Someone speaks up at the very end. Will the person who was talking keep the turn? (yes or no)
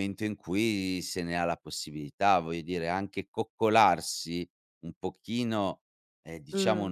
yes